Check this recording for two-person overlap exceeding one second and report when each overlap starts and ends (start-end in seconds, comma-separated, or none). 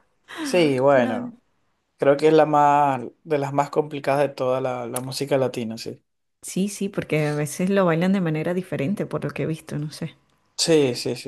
none